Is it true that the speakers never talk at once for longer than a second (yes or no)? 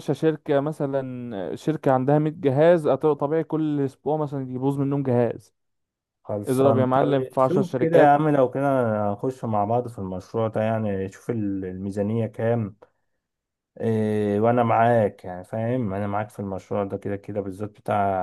no